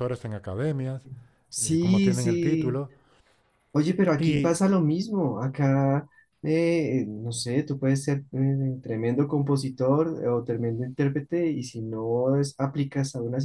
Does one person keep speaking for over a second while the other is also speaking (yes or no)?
yes